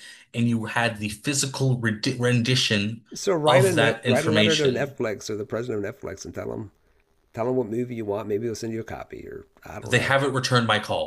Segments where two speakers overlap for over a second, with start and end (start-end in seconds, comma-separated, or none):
3.5-5.0